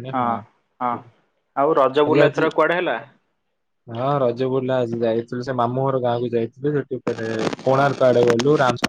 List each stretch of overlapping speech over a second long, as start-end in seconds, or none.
none